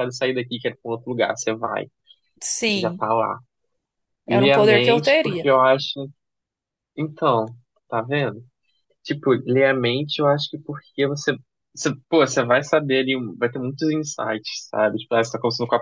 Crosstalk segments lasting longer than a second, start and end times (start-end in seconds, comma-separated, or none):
4.3-5.5